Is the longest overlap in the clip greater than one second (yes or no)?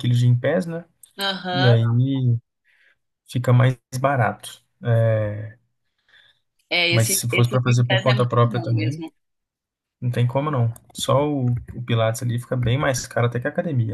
yes